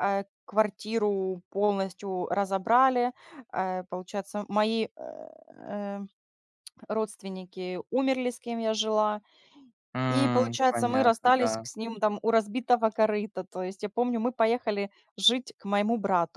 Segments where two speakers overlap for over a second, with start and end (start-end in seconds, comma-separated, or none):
10.1-11.6